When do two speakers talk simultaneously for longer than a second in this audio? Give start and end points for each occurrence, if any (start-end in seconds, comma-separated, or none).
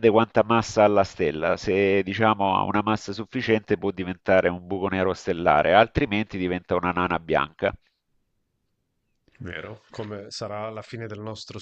none